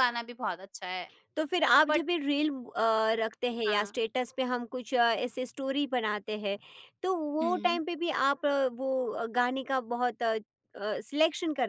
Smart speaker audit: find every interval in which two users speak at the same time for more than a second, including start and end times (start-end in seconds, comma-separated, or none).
none